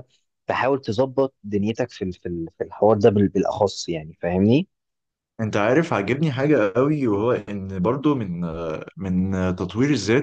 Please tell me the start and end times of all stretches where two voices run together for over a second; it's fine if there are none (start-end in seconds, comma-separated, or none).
none